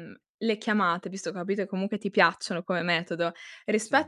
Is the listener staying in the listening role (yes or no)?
yes